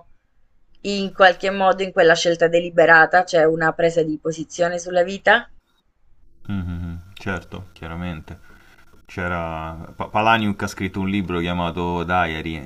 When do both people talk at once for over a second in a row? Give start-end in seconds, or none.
none